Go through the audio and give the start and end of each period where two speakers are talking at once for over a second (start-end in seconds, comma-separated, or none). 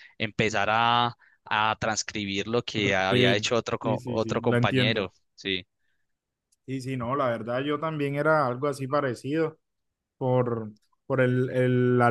2.7-5.1